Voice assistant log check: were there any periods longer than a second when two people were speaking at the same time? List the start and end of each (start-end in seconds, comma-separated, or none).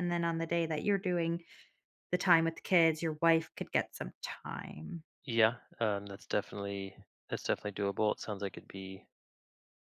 none